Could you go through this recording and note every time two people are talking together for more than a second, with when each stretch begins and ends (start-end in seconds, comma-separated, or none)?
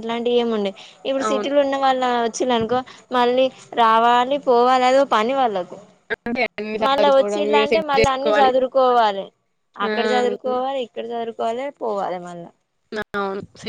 6.8-8.5